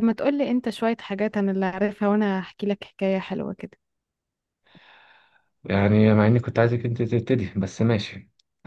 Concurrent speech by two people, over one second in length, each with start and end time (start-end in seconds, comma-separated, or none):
none